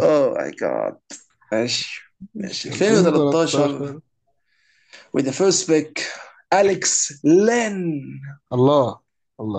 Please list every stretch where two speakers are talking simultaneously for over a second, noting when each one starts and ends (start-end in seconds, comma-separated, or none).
2.3-4.0